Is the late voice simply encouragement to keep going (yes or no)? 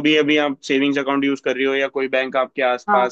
yes